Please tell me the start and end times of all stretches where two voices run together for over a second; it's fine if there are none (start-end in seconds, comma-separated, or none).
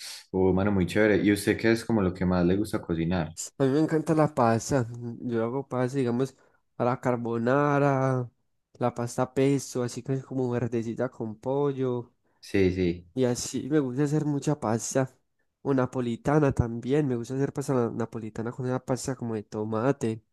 none